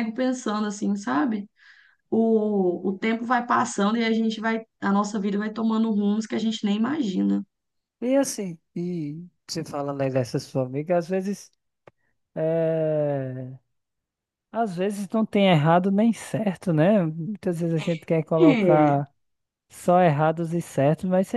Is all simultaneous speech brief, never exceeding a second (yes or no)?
yes